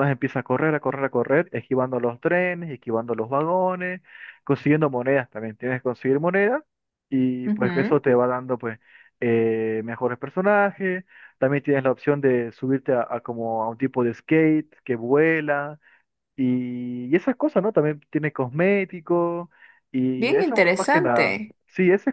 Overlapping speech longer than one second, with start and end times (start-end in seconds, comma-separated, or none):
20.2-21.6